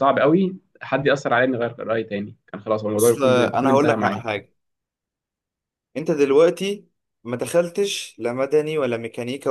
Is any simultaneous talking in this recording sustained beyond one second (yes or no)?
yes